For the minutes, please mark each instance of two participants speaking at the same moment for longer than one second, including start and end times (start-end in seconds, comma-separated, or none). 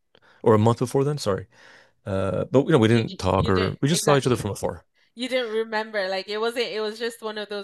2.9-4.5